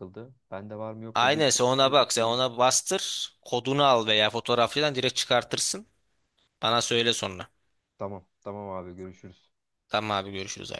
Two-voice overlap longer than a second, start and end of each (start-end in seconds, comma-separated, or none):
1.1-2.4